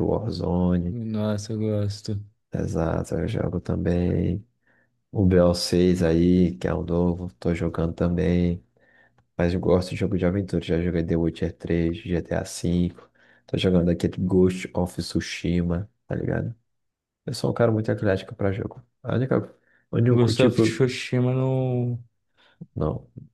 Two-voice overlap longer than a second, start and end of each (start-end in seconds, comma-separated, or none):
none